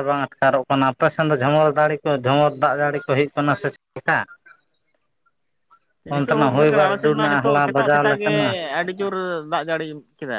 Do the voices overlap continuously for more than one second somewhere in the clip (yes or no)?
yes